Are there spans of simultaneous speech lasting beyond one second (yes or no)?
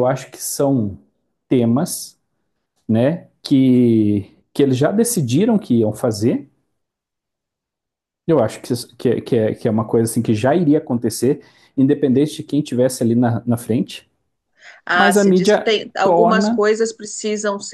yes